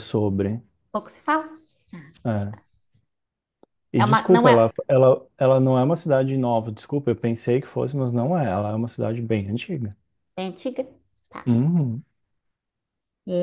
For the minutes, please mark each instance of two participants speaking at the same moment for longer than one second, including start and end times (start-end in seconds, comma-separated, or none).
none